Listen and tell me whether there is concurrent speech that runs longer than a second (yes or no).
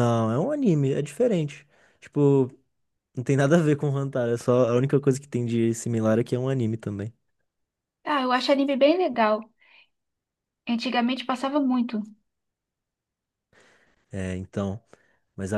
no